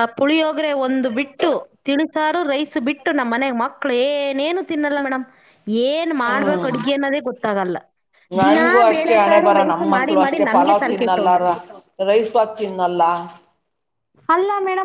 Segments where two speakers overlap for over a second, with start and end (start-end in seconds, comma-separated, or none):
8.4-11.3